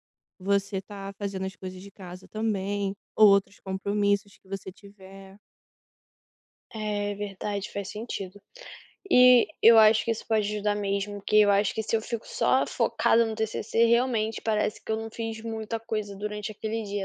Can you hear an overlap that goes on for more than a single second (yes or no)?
no